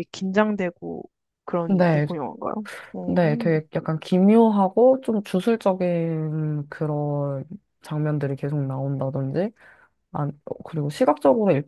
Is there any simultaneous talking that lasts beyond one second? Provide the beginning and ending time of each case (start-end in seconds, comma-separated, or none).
none